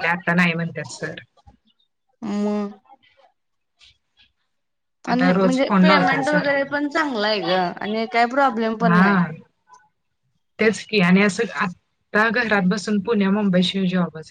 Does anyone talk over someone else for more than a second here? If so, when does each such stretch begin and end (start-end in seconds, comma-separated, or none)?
5.1-6.7